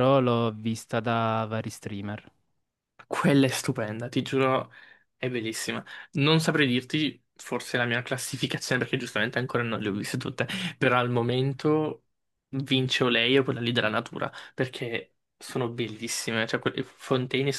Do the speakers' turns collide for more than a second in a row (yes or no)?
no